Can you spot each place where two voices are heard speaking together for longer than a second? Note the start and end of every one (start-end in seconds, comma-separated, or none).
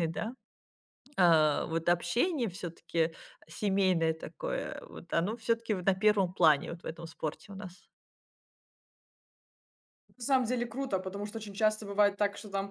none